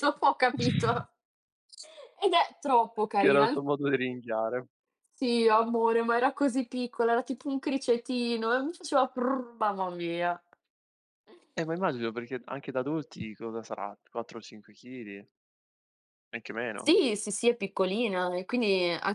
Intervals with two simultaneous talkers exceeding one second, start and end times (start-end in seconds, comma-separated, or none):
none